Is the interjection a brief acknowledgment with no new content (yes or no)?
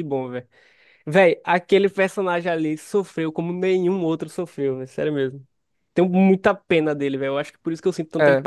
yes